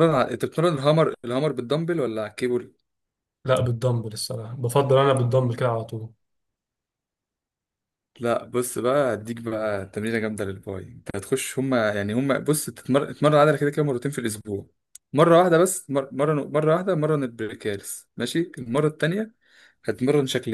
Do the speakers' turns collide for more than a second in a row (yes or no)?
no